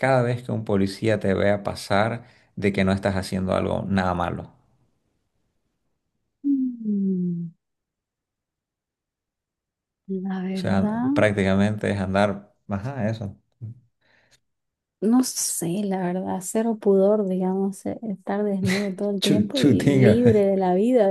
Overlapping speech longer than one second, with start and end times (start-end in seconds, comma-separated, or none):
19.2-20.4